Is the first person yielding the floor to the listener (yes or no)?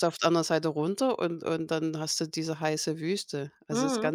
yes